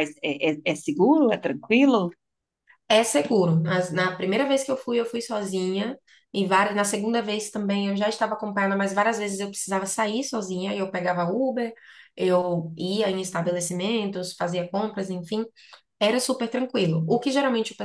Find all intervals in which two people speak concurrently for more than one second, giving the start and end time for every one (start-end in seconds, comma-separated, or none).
none